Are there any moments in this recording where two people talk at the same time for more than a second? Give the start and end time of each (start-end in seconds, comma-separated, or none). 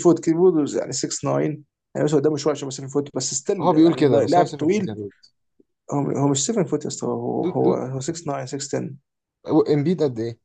3.6-4.9